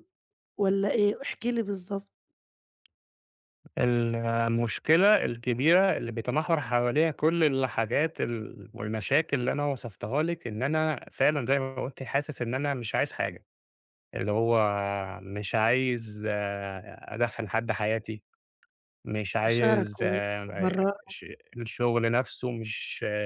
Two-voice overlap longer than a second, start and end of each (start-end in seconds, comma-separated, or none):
19.4-20.9